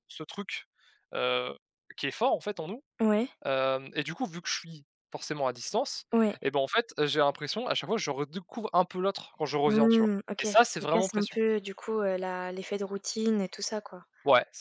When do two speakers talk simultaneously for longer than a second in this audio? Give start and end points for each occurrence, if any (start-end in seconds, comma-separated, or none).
9.7-11.4